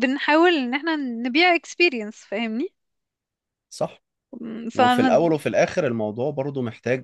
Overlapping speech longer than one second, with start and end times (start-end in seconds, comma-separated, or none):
none